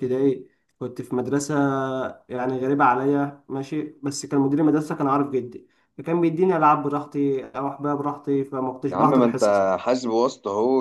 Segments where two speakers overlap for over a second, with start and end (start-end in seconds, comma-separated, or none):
none